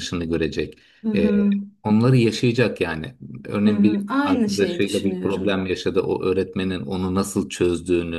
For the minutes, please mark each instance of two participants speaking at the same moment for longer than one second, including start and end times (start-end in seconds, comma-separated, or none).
3.6-5.6